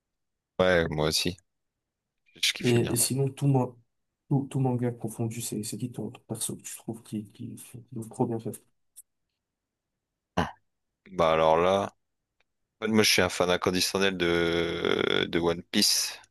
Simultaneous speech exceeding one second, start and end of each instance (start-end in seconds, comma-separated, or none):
none